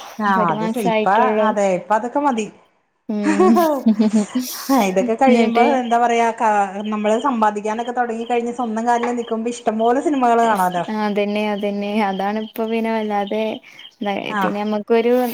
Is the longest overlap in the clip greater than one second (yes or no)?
no